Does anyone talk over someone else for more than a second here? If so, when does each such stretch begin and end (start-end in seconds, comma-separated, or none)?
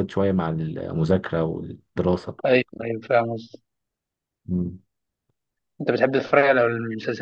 none